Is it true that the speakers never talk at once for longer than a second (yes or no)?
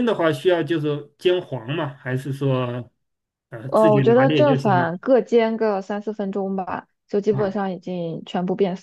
no